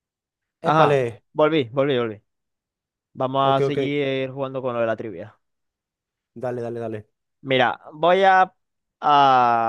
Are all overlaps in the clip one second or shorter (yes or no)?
yes